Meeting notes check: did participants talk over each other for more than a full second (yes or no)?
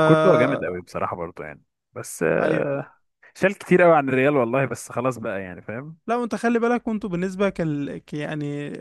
no